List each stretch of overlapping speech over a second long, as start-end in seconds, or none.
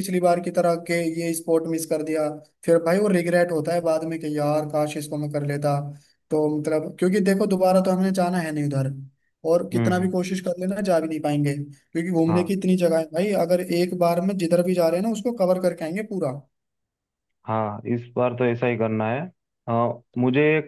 none